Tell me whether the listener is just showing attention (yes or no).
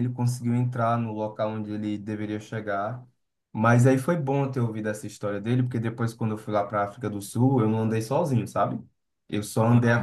yes